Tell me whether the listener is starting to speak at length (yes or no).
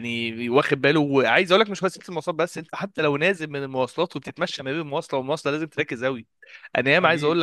no